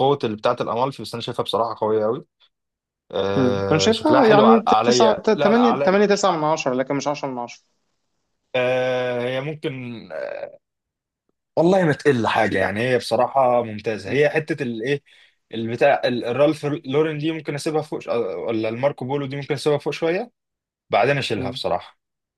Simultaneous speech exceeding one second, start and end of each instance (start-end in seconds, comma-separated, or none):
3.4-6.0